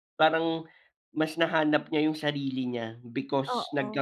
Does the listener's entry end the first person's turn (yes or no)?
no